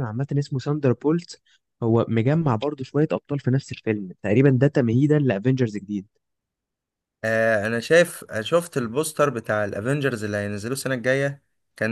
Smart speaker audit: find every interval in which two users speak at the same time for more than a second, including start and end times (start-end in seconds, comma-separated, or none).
none